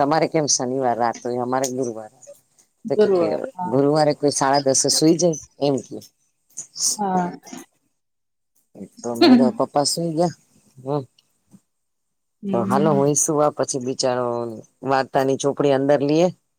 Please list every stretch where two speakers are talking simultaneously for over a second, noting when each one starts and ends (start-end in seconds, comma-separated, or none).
none